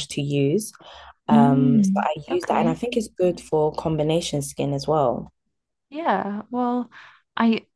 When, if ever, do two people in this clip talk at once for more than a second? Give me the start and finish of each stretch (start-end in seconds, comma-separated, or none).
1.3-2.8